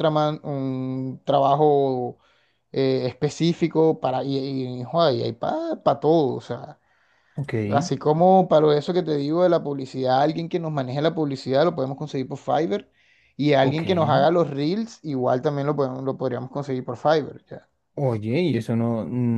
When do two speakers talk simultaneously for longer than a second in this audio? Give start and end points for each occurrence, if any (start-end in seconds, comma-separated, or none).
none